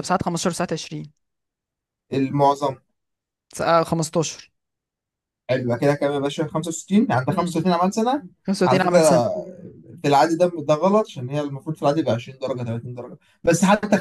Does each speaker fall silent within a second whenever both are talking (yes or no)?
yes